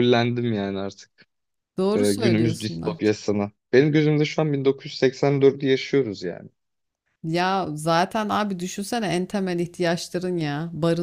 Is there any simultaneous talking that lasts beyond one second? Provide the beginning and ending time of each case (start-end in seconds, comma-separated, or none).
1.9-3.2